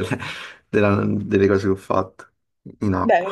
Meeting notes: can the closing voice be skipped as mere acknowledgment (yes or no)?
no